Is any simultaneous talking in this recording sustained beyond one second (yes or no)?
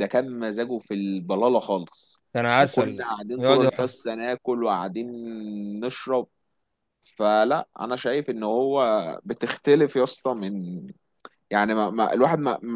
yes